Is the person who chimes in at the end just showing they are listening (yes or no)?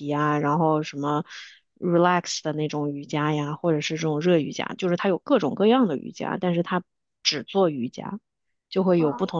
yes